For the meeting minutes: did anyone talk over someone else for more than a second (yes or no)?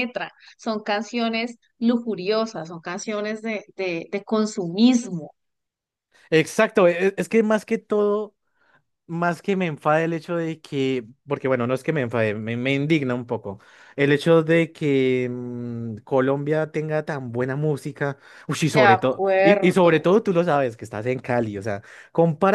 yes